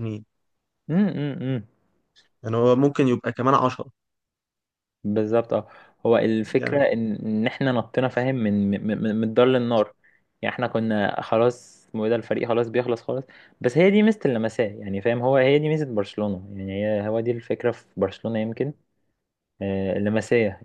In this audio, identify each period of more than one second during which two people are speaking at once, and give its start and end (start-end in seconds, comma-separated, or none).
none